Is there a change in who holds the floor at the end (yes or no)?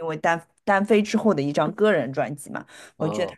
no